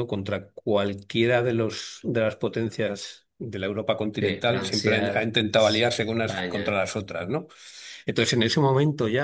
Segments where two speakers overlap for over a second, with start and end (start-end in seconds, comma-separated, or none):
4.2-6.8